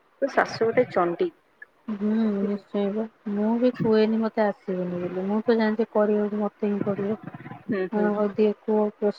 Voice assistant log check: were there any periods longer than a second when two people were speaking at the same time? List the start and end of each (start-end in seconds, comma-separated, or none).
none